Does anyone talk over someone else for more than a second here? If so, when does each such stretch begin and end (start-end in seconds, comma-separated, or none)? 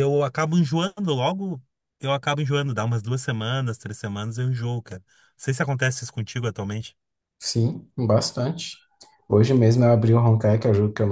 none